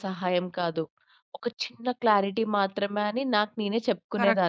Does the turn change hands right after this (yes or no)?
yes